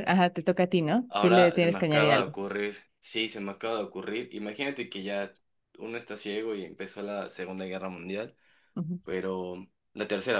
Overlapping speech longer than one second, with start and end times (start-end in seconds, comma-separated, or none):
1.1-2.3